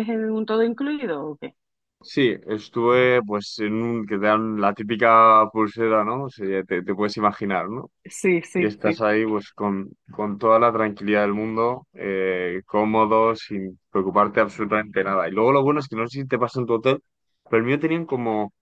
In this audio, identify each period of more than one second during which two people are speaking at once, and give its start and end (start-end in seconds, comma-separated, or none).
none